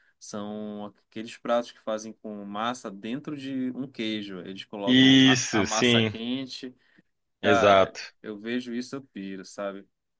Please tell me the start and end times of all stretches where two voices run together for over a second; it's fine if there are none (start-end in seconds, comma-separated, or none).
4.8-6.1